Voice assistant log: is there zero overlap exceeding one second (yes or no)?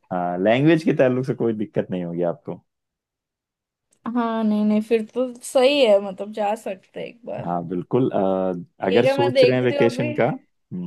no